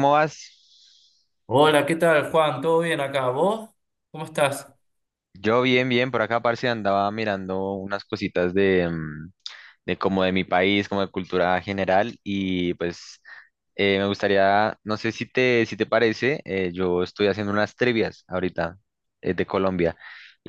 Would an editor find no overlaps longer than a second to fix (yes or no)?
yes